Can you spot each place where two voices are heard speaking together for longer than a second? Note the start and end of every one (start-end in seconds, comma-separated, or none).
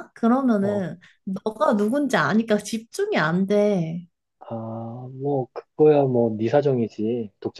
none